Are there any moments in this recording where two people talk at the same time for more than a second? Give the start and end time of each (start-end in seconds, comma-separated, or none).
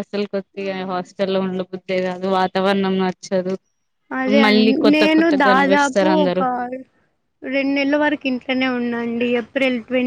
4.4-6.4